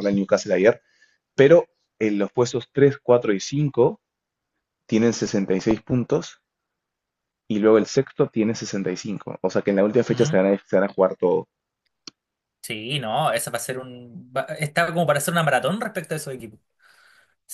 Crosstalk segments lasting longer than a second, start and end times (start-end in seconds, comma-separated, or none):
none